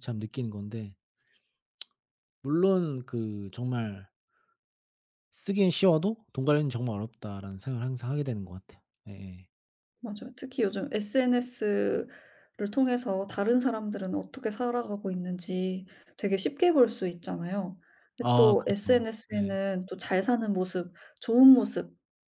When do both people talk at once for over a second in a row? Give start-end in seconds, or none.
18.2-19.6